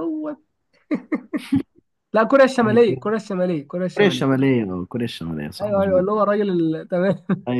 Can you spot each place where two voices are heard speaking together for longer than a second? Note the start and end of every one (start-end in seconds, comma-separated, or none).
none